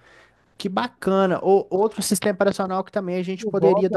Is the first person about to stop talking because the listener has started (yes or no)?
no